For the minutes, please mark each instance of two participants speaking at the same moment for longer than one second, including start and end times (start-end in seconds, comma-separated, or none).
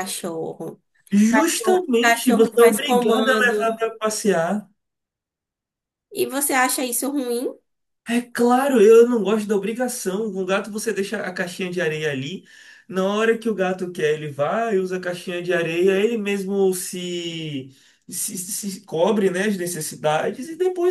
1.7-3.8